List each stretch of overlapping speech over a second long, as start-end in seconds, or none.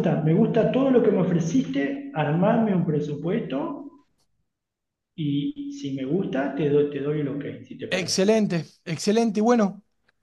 none